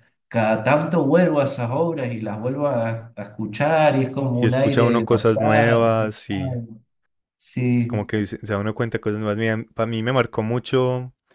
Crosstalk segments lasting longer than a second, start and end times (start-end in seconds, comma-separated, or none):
4.3-6.2